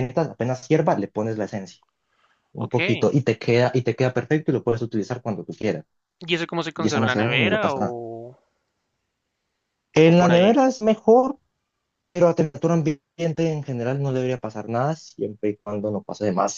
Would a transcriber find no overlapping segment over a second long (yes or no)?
no